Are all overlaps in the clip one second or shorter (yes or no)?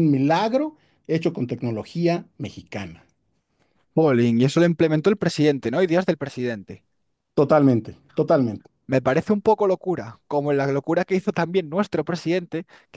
yes